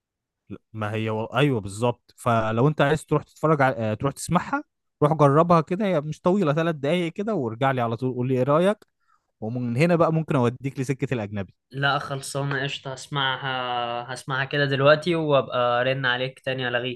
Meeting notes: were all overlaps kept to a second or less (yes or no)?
yes